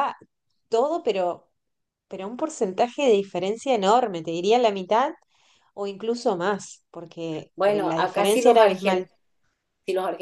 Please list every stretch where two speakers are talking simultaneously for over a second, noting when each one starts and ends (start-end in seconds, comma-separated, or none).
7.5-9.1